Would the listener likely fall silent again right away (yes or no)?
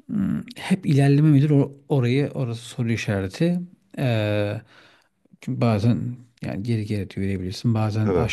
yes